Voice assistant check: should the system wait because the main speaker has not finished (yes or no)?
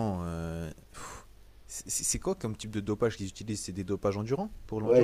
no